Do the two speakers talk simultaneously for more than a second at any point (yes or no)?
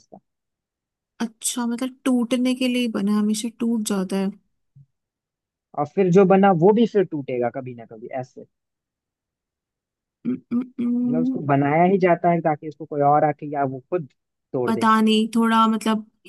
no